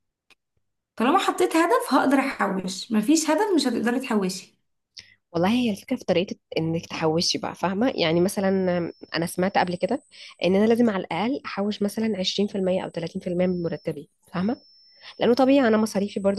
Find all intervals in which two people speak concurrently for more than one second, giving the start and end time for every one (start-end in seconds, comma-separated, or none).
none